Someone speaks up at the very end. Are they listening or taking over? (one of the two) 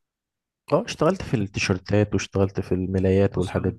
taking over